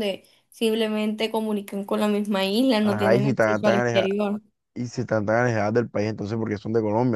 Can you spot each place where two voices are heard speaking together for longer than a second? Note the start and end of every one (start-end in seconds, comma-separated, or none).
2.8-4.1